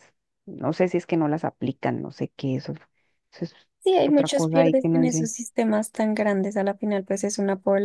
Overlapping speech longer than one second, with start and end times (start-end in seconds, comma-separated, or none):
4.0-5.3